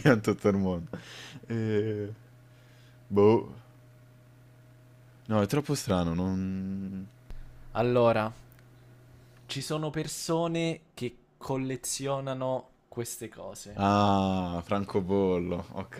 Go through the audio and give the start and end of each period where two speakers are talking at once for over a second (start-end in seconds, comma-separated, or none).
none